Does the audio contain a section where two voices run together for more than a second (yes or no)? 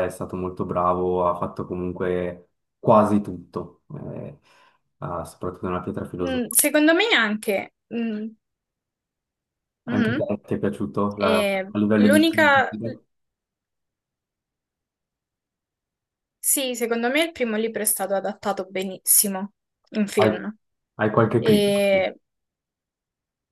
yes